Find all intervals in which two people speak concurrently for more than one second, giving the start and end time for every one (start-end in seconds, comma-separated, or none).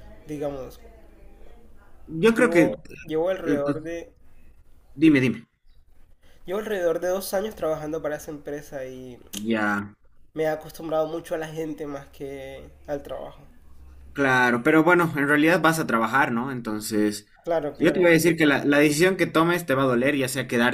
none